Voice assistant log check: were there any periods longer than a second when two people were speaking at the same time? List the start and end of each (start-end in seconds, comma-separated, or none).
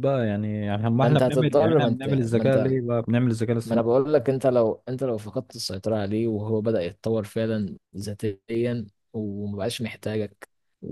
1.0-2.8